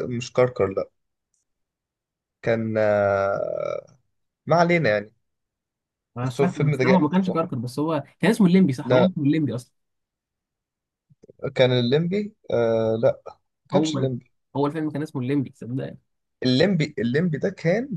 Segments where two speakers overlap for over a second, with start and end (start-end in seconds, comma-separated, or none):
6.2-7.4